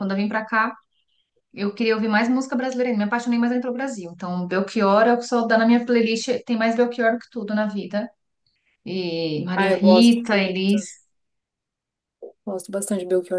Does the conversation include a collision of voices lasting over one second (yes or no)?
yes